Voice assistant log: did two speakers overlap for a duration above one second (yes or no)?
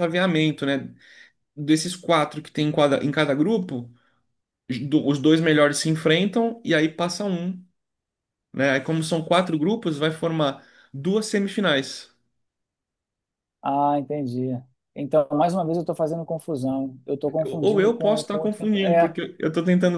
yes